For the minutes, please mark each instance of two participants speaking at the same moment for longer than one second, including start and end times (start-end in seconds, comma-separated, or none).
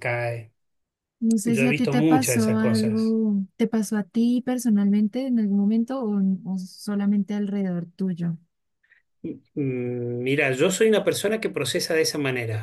1.4-3.2